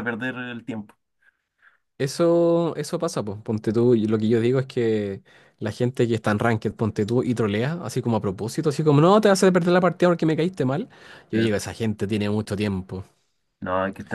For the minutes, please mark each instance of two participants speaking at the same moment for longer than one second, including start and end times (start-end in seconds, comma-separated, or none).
none